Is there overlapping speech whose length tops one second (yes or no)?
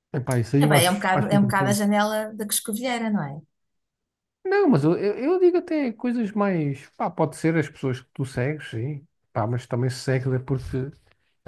yes